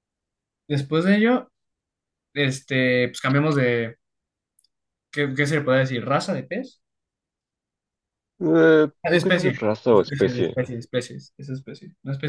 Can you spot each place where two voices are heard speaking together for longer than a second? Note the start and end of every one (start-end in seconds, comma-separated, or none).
9.0-10.6